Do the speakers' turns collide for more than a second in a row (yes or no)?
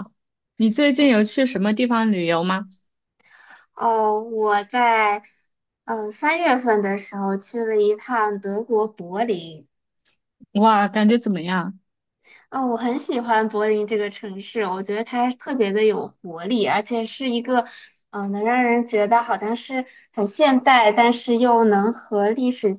no